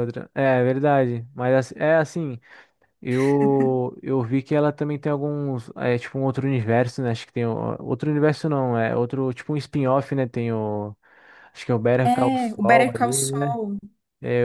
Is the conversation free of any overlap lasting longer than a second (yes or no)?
no